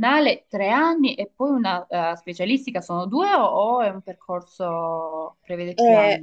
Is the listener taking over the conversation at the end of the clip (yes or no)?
yes